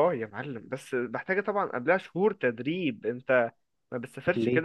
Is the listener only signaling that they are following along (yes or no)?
yes